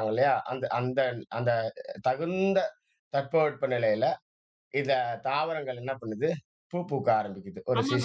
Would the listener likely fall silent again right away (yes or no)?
no